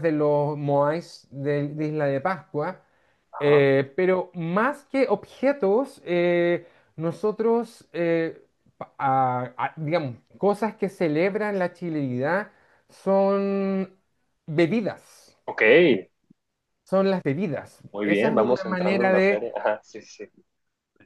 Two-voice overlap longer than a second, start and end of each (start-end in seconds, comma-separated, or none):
17.9-19.4